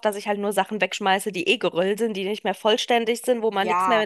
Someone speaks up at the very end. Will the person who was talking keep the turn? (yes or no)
no